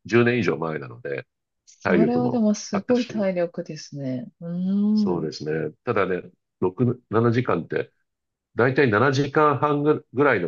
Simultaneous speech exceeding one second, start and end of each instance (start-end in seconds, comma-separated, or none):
1.8-3.3